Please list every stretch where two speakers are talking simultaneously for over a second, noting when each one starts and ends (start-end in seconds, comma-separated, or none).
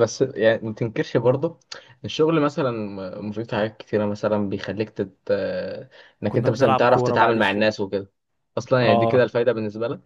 6.3-7.7